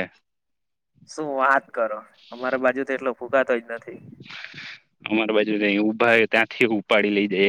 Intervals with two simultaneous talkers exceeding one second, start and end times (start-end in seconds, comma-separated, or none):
none